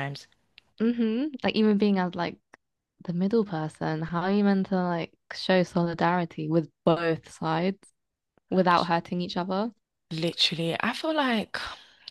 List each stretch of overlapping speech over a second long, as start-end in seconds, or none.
none